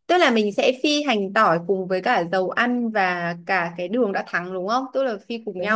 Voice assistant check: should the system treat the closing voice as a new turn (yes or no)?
yes